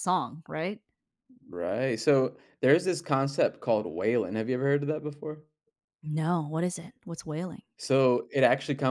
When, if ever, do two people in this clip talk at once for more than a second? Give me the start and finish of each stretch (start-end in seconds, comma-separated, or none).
none